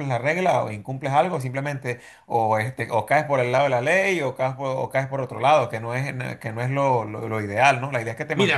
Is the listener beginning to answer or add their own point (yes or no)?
yes